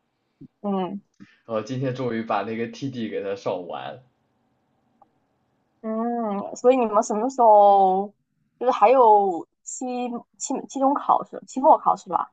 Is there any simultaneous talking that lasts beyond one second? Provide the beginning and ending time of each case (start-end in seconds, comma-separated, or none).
none